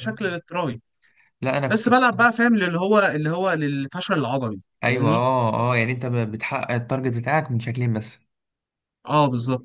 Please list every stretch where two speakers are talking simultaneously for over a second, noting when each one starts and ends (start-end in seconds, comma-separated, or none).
none